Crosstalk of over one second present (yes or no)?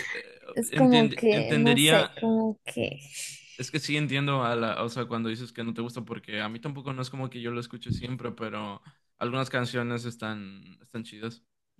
yes